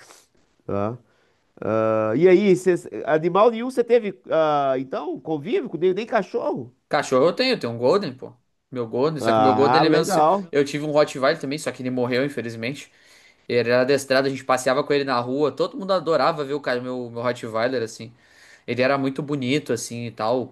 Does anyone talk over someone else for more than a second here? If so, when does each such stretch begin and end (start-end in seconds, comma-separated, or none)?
9.2-10.5